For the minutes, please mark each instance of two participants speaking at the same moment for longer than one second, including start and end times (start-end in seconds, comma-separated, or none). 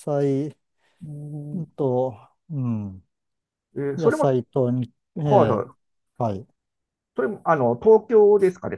none